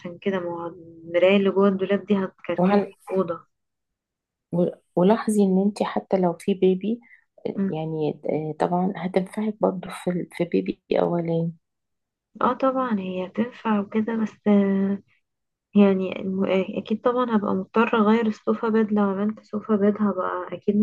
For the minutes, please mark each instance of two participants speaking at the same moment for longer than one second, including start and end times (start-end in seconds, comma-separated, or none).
none